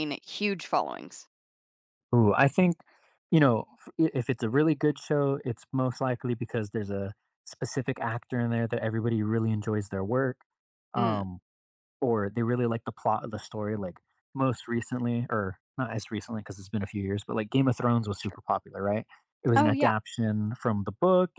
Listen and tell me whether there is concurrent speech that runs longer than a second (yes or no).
no